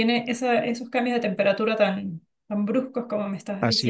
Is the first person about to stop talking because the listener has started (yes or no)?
yes